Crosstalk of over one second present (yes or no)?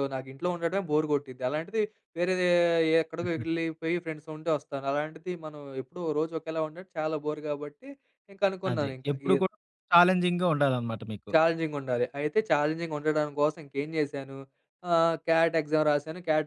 no